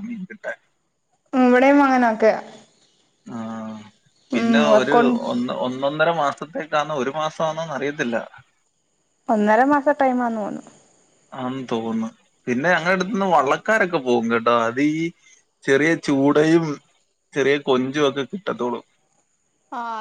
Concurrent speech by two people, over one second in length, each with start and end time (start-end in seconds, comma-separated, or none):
none